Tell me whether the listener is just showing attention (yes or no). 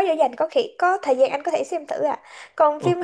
yes